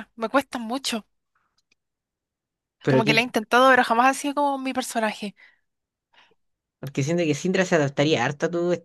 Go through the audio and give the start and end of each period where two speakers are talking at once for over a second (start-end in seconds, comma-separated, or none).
none